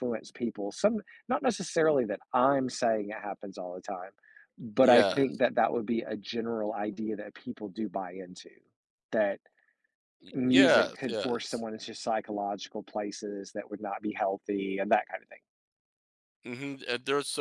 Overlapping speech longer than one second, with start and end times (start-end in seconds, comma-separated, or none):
10.3-11.6